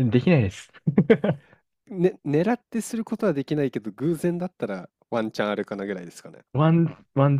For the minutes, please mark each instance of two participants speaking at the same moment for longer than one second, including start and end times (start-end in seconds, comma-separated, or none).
none